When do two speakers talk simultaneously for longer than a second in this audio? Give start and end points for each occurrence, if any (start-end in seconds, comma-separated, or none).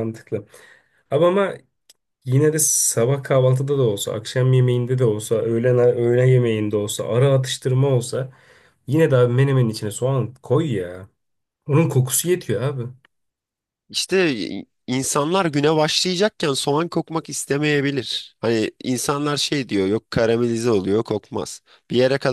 none